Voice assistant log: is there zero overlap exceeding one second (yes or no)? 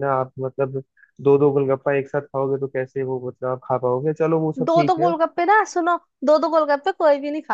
yes